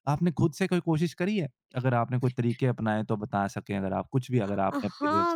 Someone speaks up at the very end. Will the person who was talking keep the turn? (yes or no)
no